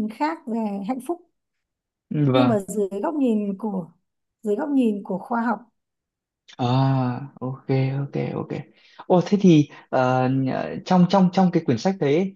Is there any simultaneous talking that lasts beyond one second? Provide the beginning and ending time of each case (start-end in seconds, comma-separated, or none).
none